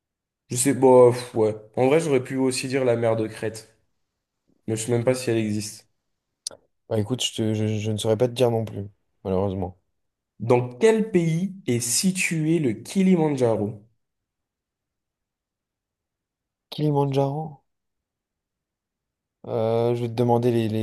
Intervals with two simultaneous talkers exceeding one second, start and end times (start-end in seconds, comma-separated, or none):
none